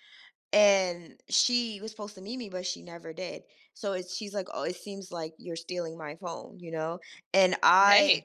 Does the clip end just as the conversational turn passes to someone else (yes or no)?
no